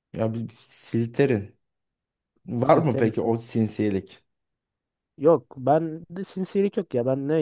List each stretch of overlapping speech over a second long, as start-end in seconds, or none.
none